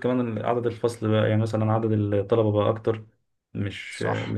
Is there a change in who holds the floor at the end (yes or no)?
no